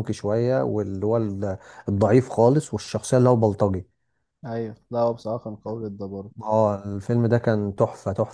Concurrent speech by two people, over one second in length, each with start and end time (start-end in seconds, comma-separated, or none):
none